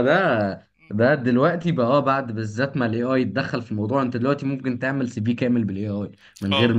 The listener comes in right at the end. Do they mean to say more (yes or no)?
no